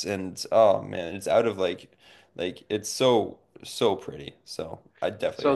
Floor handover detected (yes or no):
yes